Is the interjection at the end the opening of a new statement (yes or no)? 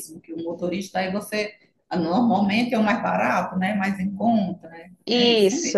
yes